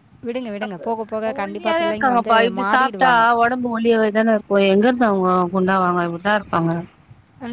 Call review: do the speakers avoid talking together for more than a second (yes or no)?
no